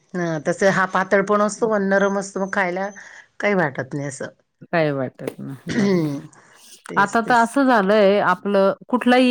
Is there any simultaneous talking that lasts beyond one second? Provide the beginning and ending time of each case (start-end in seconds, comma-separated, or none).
none